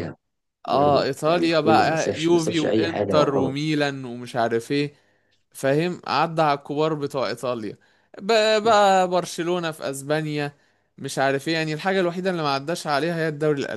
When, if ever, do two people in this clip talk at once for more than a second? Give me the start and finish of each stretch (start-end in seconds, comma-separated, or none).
0.7-3.5